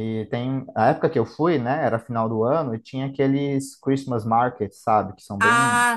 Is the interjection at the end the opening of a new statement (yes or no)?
yes